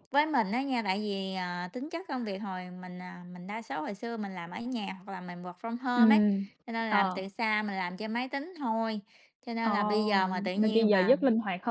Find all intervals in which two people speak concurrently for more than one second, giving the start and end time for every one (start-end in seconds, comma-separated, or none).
9.6-11.2